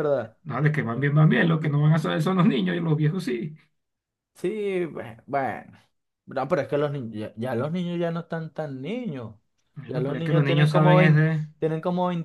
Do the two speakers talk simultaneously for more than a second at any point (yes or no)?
yes